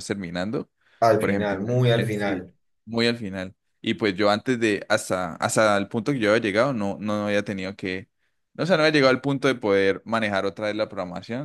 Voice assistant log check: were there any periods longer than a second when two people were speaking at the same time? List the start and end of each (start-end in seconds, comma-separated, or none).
1.2-2.5